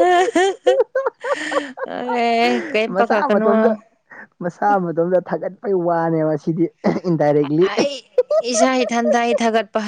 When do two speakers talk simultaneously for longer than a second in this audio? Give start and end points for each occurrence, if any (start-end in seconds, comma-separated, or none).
none